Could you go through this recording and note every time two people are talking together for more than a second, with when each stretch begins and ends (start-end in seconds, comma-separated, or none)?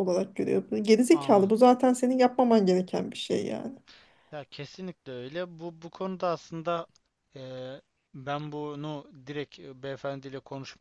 none